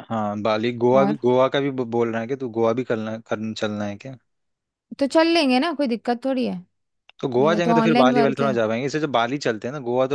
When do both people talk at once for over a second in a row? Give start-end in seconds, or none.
7.4-8.6